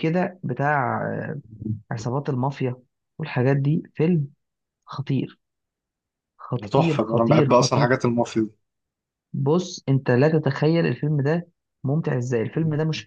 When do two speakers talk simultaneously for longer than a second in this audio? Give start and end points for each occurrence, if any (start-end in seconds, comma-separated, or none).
6.6-7.9